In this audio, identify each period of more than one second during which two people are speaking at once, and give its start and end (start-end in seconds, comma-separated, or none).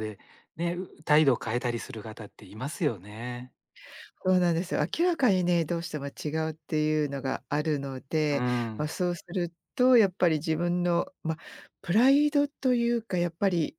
none